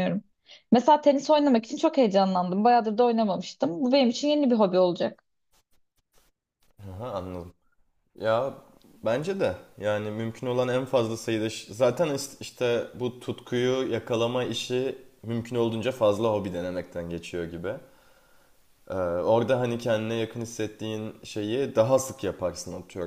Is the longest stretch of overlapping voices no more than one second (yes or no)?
yes